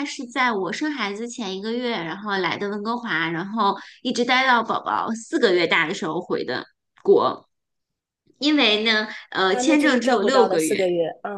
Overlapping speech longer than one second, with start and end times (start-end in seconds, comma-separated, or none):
9.4-10.8